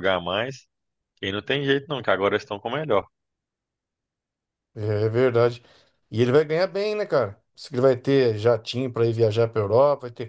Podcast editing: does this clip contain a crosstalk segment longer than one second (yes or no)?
no